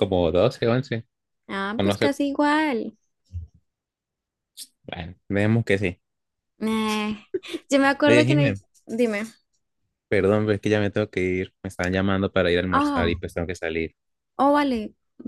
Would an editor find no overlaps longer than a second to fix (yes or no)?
yes